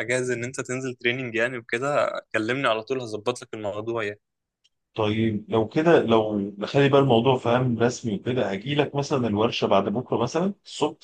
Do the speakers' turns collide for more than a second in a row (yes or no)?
no